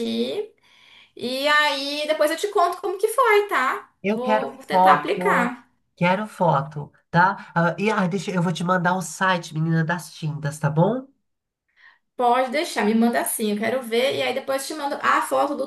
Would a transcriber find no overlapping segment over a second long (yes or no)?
no